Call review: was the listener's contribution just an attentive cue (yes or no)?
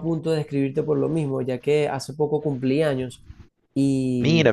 yes